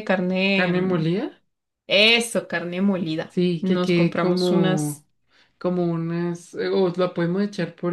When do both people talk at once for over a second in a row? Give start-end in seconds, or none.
3.3-5.0